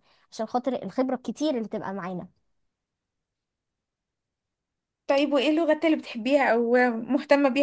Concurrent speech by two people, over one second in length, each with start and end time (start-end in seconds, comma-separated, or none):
none